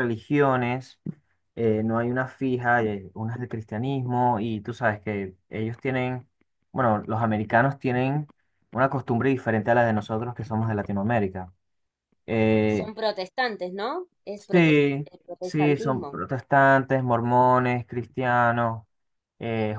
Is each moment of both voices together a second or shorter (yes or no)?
no